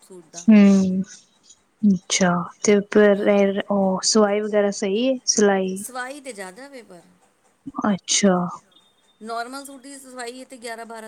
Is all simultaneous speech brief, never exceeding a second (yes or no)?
yes